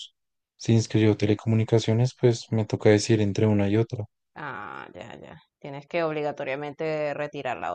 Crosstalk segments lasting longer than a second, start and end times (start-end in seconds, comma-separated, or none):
none